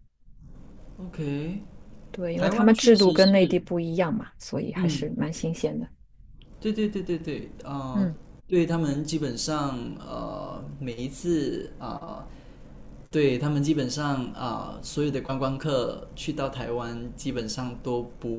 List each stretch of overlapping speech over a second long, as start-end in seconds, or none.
2.4-3.6